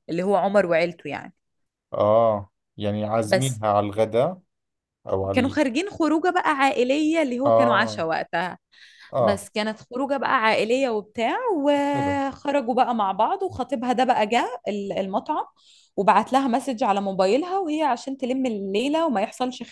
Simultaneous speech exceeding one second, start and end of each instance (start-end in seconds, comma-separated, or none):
none